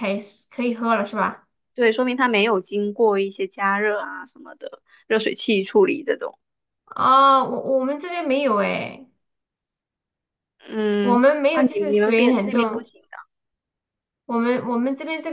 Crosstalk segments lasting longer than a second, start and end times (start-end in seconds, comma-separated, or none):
11.0-12.9